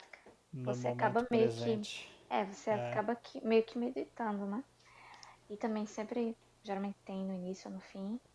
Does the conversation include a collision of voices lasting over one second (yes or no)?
yes